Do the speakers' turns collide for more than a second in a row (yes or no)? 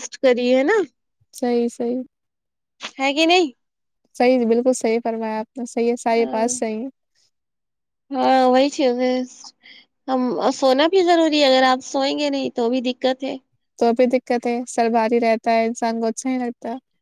no